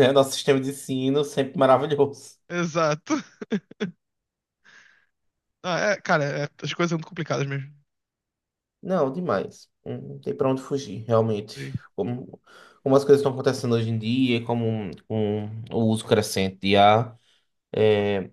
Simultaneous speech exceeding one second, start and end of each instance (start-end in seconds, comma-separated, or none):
none